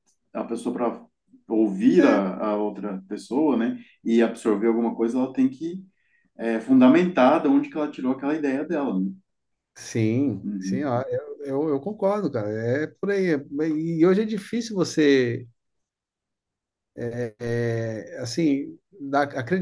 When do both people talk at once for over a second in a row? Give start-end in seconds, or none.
none